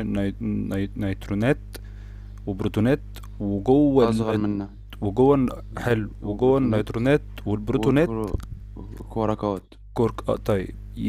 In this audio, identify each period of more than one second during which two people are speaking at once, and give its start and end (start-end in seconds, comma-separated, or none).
5.7-7.0